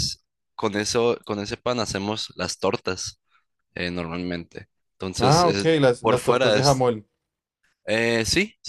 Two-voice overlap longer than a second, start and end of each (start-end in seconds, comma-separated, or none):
5.2-6.8